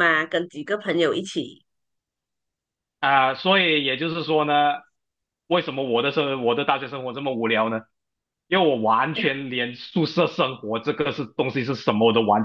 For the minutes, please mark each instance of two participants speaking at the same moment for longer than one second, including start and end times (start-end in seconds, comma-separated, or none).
none